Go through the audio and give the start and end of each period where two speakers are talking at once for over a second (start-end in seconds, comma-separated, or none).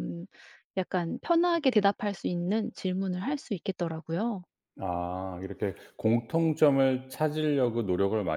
none